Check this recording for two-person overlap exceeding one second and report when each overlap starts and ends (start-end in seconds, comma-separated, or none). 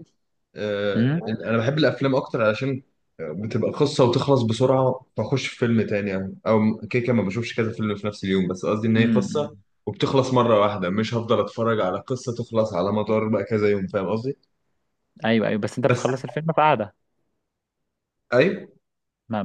none